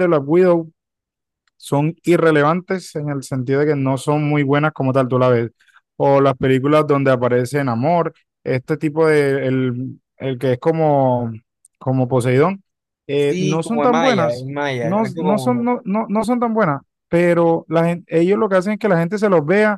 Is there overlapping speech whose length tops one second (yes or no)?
yes